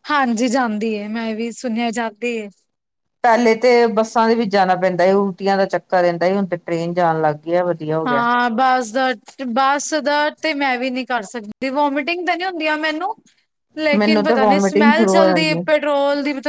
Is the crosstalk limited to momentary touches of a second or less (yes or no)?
no